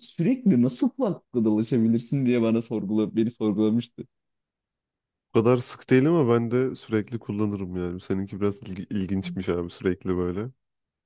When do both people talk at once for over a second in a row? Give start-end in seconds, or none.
none